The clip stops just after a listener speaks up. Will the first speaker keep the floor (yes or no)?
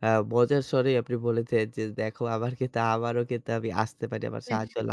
yes